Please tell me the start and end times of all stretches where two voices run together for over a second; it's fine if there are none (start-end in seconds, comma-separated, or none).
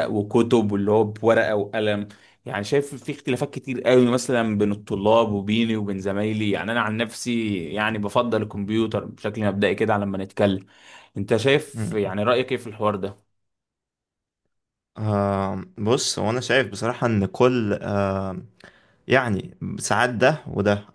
none